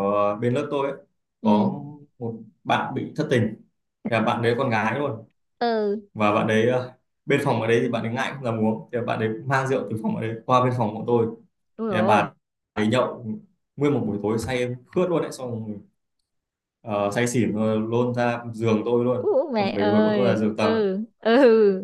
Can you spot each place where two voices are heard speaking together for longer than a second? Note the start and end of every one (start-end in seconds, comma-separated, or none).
19.2-20.8